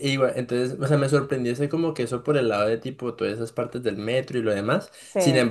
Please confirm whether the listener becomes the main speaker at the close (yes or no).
no